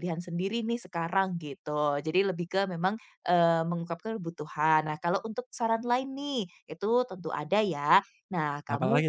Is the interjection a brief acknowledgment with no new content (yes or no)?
yes